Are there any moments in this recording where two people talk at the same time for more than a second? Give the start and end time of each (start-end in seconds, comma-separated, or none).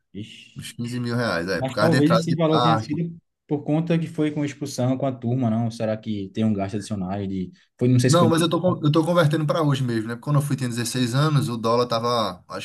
1.6-3.0